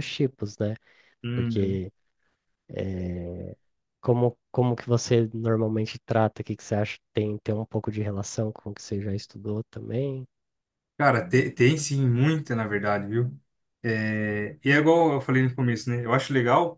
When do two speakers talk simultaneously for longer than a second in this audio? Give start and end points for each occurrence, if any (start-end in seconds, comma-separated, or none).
none